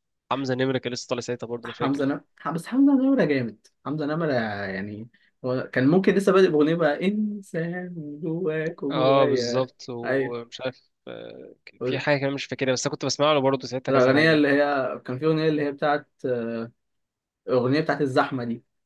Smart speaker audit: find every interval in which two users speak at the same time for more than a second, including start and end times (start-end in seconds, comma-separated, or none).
8.9-10.5